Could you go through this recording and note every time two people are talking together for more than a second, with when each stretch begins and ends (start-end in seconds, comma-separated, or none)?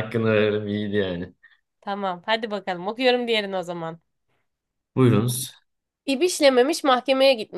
none